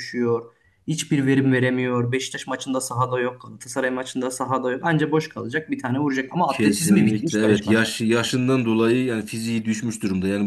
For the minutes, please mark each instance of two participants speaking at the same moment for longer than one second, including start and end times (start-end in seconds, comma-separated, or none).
6.5-7.8